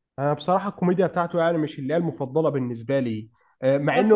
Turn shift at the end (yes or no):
no